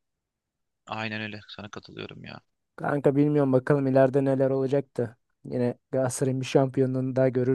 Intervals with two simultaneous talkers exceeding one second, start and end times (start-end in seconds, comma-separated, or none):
none